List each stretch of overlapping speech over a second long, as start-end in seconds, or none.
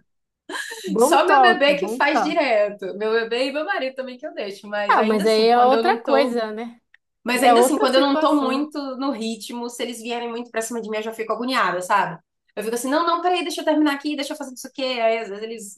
1.0-2.5, 4.9-6.4, 7.4-8.7